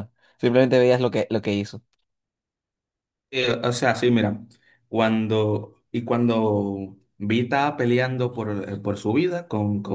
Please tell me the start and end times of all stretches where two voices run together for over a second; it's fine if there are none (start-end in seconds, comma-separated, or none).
none